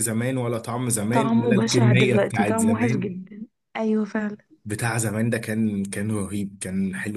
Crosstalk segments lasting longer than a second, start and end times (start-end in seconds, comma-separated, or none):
1.1-3.1